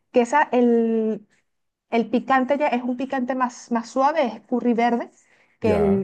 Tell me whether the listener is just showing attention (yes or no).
yes